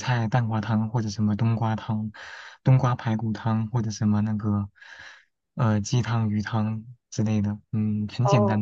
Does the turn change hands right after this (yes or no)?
yes